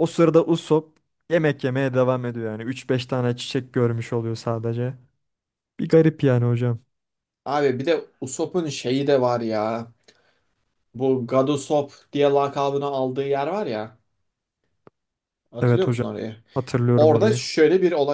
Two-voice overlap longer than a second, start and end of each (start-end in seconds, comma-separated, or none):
none